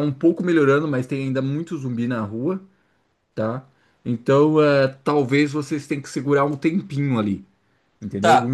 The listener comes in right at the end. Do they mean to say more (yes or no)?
yes